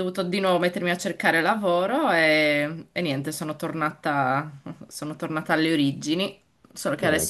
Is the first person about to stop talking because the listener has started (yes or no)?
no